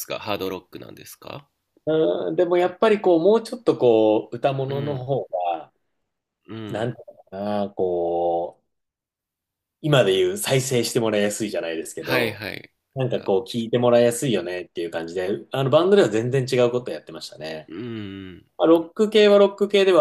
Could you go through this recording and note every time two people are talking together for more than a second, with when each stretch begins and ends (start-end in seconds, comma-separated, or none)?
none